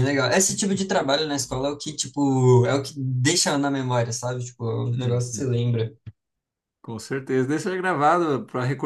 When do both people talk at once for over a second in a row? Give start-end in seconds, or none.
none